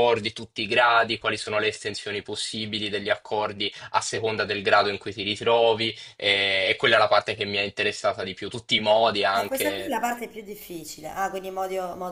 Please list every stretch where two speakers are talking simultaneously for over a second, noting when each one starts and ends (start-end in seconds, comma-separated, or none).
none